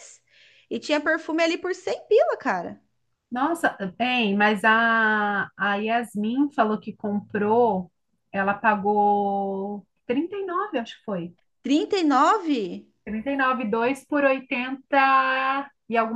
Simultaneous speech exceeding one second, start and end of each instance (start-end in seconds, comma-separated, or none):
none